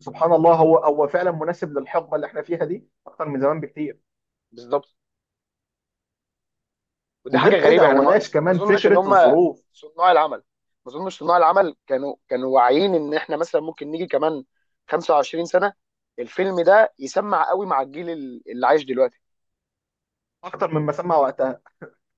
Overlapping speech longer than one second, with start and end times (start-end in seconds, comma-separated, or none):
7.3-9.1